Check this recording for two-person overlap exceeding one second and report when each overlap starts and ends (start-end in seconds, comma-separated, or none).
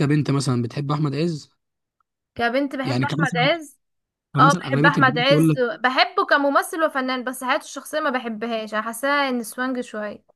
4.4-5.6